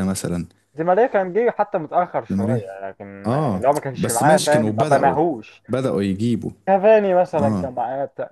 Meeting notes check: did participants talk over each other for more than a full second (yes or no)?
yes